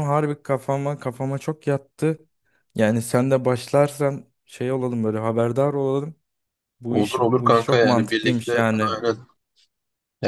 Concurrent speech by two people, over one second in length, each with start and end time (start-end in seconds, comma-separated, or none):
6.9-9.0